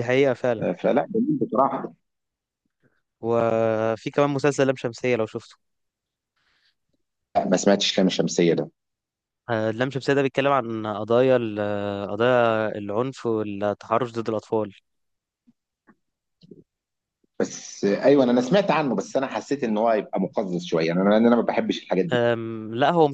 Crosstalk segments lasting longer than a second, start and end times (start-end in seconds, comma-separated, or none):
none